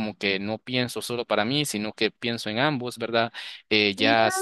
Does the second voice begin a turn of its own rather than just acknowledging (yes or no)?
no